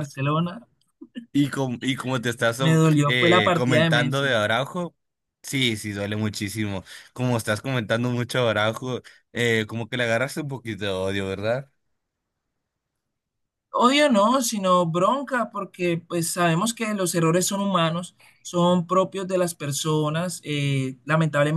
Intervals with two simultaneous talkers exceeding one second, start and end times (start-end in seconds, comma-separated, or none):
2.6-4.4